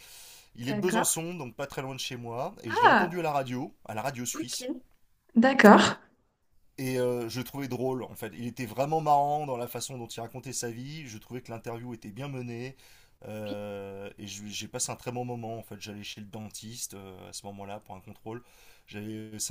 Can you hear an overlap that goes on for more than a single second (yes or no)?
no